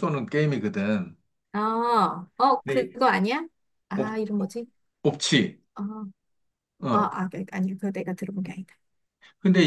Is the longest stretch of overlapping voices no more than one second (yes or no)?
yes